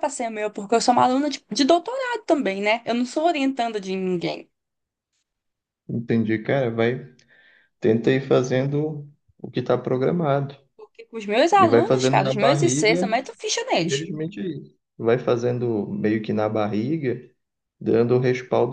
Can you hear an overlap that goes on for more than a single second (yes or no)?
yes